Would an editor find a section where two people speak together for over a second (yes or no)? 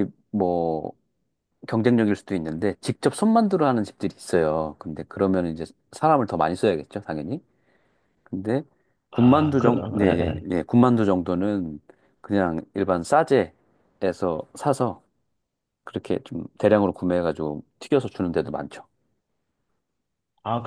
yes